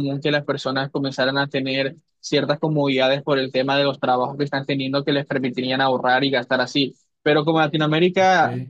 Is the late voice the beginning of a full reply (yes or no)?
no